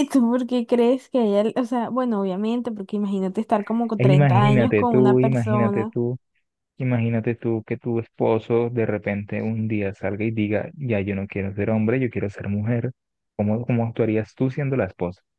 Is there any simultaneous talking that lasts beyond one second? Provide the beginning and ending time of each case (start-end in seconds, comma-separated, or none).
4.0-6.0